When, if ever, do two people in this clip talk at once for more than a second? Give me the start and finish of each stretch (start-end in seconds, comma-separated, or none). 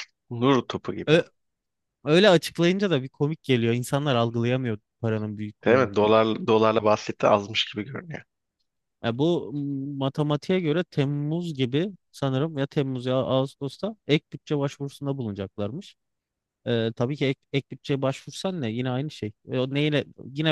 none